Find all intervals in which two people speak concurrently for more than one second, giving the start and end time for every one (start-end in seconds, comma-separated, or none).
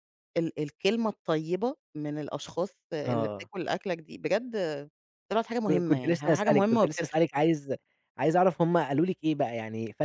5.7-7.2